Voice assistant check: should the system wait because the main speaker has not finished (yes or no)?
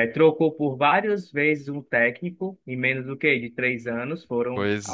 yes